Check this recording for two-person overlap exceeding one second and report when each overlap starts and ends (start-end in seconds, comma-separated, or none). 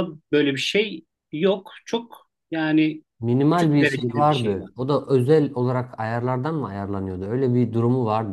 3.5-4.7